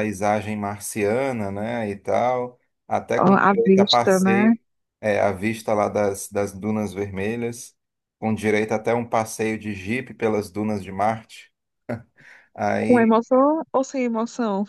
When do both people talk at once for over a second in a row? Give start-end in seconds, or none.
3.2-4.5